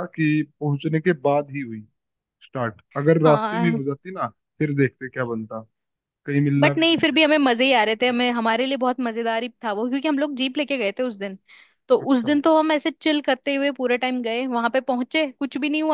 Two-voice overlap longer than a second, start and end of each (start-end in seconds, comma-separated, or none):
6.6-8.5